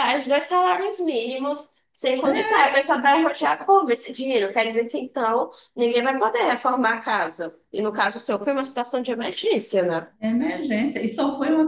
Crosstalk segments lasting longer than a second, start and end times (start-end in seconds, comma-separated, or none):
none